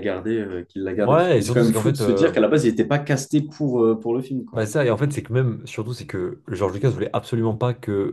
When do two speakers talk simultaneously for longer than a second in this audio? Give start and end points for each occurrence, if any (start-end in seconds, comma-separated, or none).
1.1-2.4